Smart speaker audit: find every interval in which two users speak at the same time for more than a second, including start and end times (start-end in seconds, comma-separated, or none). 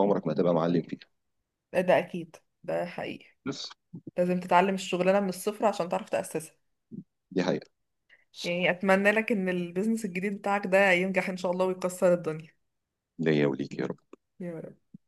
none